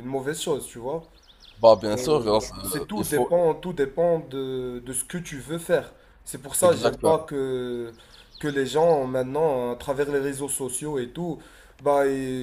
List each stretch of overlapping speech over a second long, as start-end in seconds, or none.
1.9-3.3